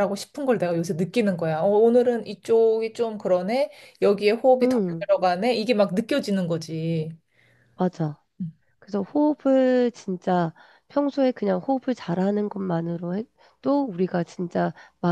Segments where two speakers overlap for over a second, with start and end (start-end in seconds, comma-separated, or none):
none